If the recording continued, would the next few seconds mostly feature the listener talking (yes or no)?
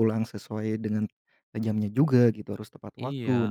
no